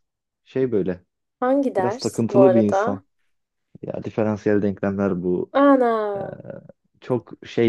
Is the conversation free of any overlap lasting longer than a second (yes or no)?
no